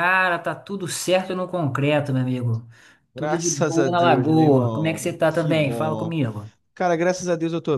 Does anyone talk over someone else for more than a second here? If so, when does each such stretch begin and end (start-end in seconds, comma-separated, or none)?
3.1-6.2